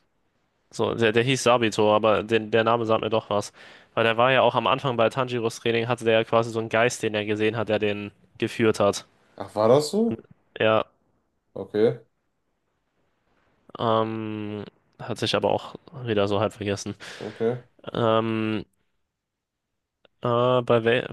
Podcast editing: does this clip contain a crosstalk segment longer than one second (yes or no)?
no